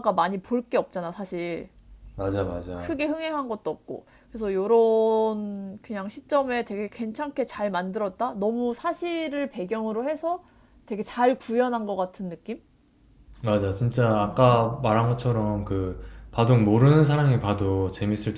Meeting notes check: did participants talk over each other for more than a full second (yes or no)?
no